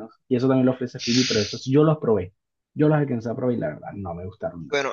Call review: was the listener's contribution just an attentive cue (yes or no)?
no